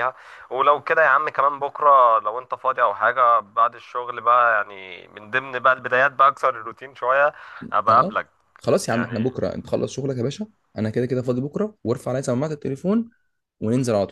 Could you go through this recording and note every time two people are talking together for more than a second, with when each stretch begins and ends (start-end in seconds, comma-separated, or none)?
none